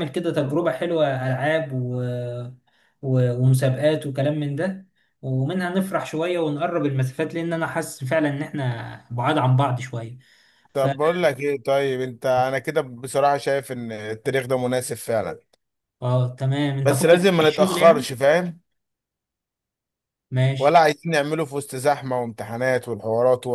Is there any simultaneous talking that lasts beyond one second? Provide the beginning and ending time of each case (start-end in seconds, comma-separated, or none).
16.9-18.1